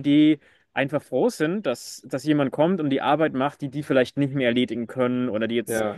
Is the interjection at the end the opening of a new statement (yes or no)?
no